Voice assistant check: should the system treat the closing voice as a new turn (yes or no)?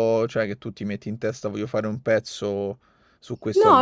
yes